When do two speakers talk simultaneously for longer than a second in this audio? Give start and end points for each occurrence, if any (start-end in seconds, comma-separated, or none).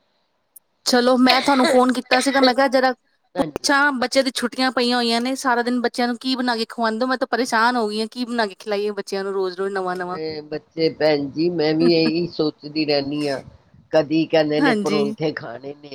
none